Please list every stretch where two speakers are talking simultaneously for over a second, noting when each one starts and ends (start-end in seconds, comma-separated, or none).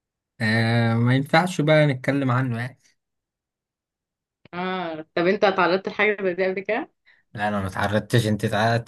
none